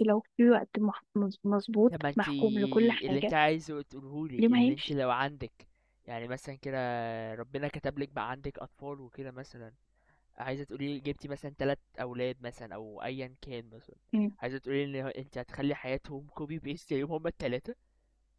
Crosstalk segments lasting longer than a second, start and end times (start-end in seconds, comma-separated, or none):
1.9-3.4